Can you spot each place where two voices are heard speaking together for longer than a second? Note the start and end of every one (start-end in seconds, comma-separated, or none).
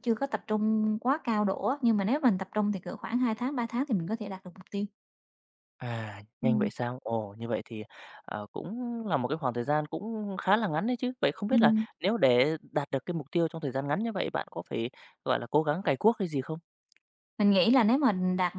none